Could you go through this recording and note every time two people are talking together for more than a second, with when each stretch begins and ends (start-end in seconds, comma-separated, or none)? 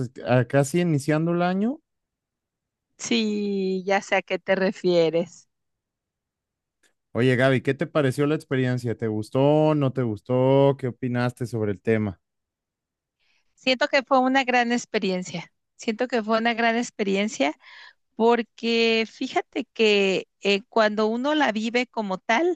none